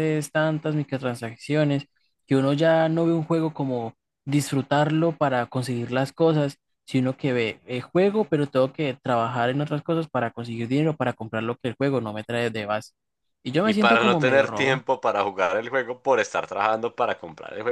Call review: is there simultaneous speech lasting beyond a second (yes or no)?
yes